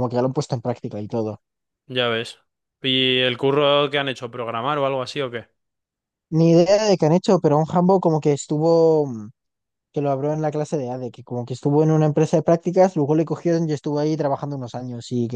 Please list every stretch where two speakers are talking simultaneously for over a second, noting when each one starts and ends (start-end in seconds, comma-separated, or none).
none